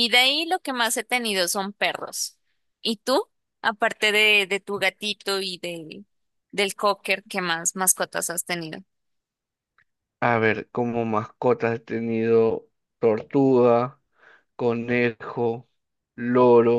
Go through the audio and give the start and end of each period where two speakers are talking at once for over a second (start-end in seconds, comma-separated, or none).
none